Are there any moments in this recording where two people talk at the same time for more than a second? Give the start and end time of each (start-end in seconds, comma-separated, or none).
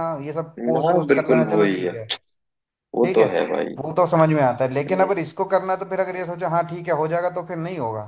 0.6-1.9